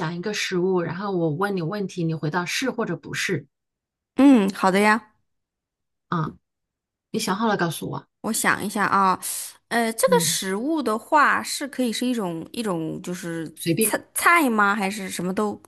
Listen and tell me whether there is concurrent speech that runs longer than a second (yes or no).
no